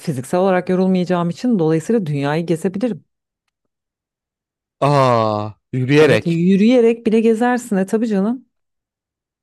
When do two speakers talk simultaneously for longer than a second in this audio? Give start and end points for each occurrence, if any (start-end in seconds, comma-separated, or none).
none